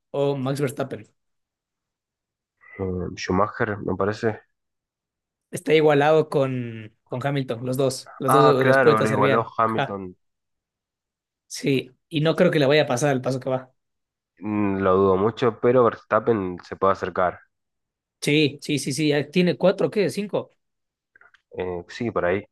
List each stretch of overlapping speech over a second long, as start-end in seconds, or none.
8.3-10.0